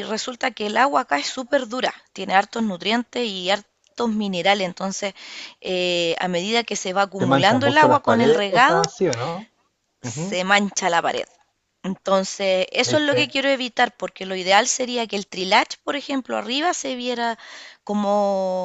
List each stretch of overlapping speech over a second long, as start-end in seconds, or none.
7.2-8.9